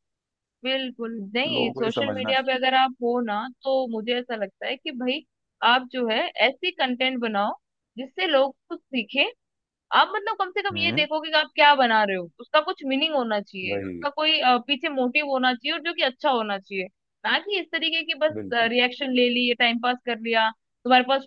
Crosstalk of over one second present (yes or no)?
yes